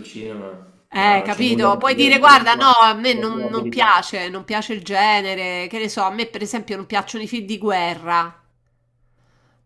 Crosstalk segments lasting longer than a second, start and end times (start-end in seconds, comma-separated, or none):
0.9-4.0